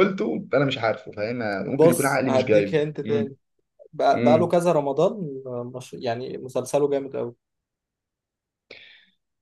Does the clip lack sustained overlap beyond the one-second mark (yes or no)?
no